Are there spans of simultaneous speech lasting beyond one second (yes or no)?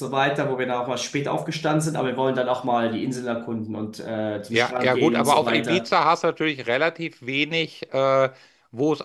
yes